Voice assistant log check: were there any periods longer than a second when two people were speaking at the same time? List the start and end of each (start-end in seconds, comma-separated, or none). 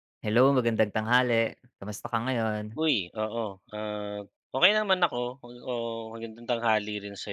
none